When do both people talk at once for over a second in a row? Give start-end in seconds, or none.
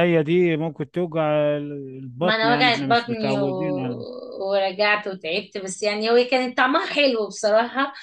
2.2-4.0